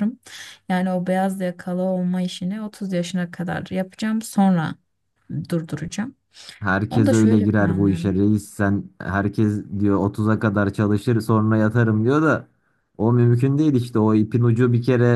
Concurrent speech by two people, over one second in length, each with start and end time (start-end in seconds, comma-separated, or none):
6.9-8.1